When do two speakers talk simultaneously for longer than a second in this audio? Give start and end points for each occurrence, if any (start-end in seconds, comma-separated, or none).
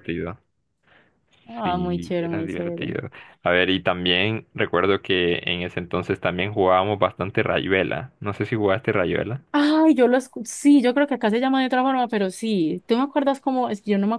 1.6-3.0